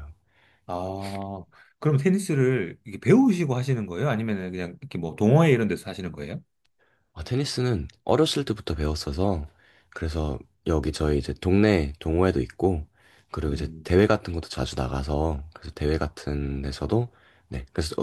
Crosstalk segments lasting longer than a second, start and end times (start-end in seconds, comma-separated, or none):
none